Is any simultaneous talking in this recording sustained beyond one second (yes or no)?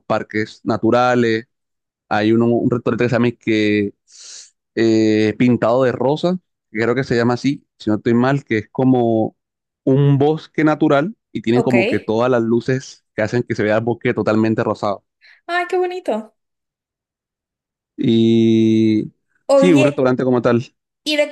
no